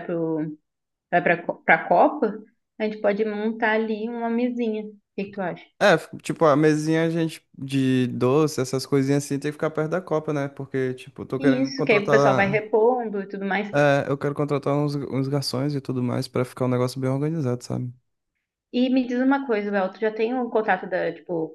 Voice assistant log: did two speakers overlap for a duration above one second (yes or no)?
yes